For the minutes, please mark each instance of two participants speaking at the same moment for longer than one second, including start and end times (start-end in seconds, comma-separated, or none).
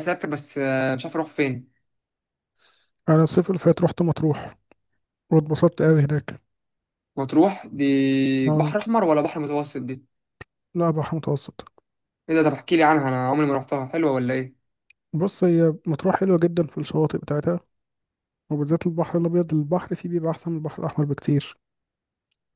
none